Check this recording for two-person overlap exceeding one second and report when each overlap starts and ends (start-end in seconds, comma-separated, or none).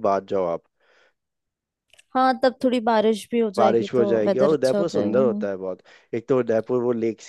3.6-5.4